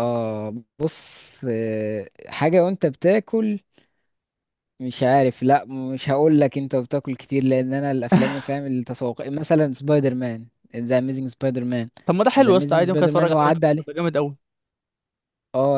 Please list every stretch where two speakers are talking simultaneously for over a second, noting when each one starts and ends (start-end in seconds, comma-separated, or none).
12.4-13.9